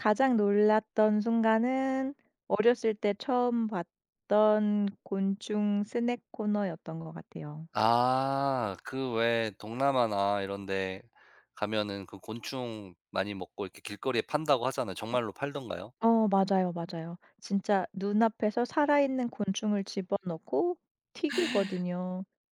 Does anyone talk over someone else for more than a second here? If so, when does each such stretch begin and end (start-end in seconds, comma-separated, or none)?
none